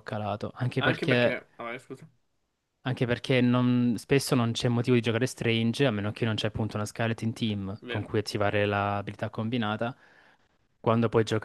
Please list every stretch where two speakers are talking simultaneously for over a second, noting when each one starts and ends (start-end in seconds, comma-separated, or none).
none